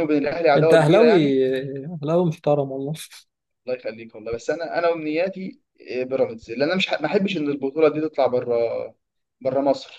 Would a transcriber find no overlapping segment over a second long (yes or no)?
yes